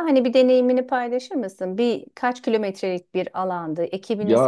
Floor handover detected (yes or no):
yes